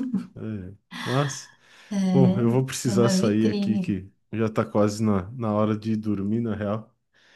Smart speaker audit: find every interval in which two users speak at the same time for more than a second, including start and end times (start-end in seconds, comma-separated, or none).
2.1-3.9